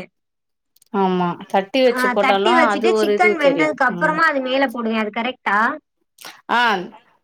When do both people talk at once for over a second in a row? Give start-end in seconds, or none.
2.0-4.2